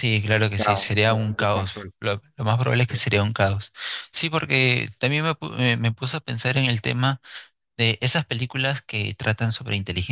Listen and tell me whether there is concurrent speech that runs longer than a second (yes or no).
yes